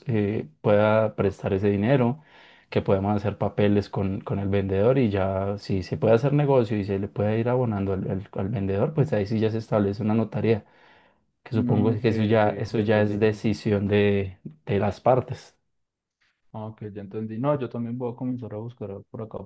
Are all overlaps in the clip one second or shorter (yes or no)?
no